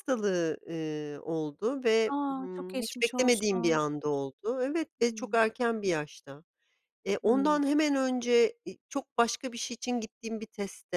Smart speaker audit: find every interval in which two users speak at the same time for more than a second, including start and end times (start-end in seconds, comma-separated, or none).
2.1-3.8